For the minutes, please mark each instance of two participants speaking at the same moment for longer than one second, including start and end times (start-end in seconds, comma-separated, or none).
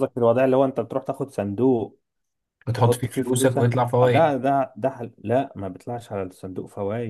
2.8-4.3